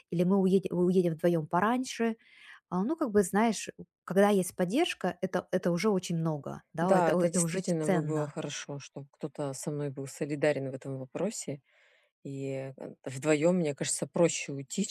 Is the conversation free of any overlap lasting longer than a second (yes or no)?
no